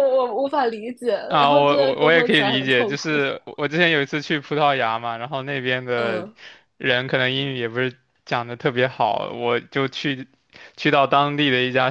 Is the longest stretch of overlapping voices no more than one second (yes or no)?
no